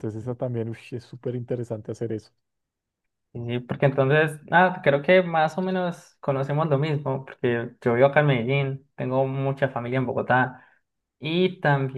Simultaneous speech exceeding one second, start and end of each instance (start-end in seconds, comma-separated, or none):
none